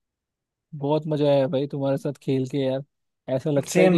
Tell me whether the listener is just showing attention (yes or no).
yes